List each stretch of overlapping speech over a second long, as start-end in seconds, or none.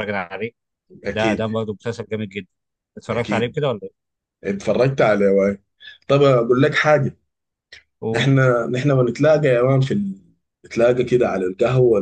none